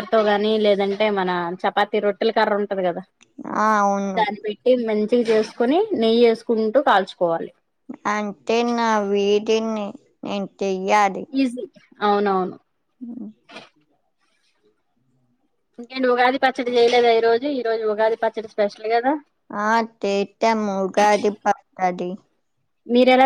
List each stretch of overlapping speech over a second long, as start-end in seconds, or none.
none